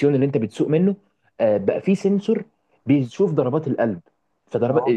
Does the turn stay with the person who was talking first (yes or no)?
yes